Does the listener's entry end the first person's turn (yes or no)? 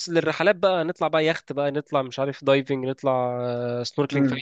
yes